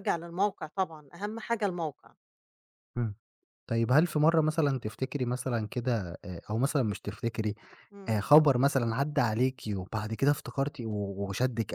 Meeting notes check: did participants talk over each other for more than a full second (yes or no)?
no